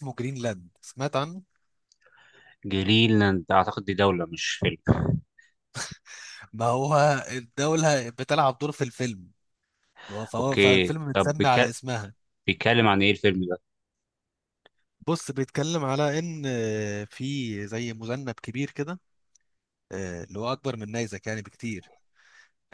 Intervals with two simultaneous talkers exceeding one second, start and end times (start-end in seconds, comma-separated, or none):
10.4-11.7